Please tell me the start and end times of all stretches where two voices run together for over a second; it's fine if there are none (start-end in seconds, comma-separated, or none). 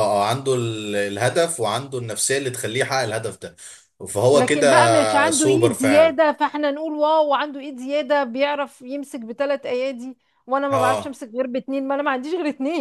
4.3-6.2